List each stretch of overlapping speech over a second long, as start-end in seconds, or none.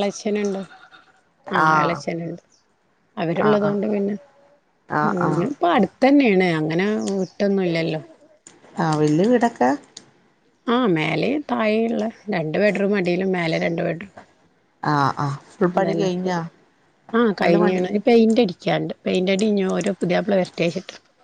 none